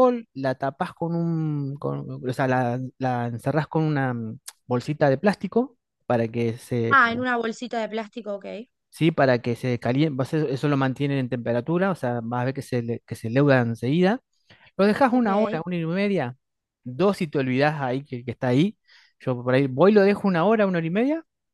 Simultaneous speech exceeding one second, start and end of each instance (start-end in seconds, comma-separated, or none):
none